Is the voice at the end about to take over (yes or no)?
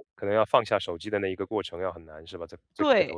yes